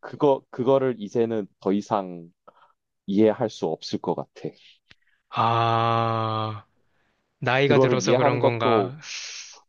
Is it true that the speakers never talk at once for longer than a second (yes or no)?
no